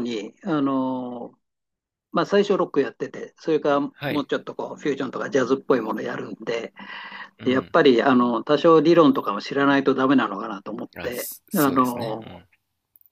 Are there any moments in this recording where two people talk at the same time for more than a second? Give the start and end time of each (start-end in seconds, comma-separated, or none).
11.0-12.4